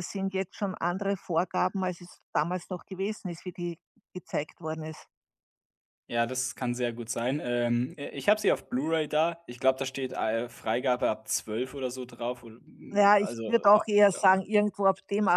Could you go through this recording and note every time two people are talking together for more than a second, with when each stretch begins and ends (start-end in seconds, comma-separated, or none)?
12.9-14.4